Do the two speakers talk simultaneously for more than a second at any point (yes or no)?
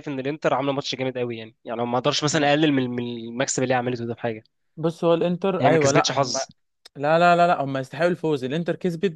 no